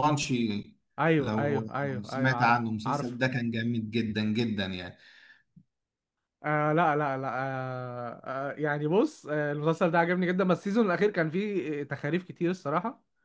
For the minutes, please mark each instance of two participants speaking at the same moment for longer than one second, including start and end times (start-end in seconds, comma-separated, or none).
1.2-3.2